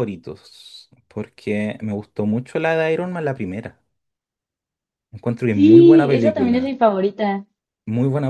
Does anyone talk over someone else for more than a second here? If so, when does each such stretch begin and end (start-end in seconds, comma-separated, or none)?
5.5-6.7